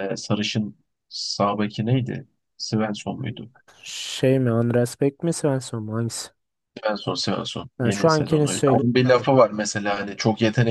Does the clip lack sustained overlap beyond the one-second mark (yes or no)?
no